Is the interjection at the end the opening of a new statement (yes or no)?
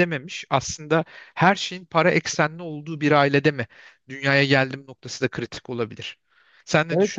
yes